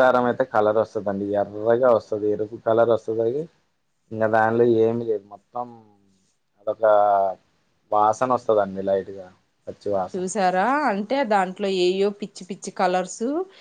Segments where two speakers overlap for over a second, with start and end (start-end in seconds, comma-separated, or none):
none